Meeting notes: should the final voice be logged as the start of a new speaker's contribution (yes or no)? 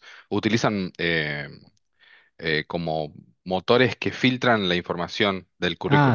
yes